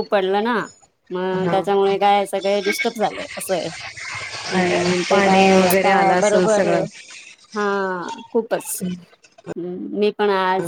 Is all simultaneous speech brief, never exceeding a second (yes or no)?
no